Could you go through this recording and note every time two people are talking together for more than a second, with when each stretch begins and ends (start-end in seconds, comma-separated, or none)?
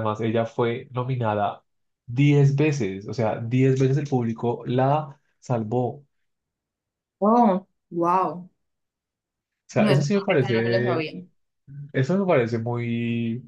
9.8-11.0